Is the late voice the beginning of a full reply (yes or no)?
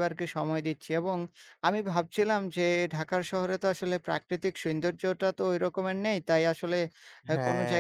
no